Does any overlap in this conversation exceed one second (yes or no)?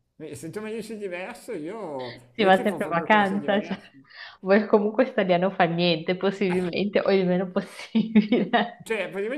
yes